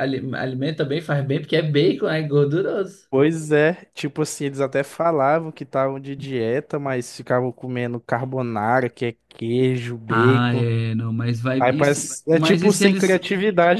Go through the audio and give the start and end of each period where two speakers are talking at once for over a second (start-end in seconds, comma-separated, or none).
11.6-13.2